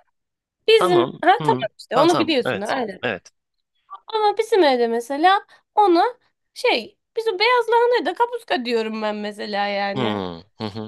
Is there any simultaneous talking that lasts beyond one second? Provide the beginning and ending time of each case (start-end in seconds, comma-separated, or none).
0.8-3.0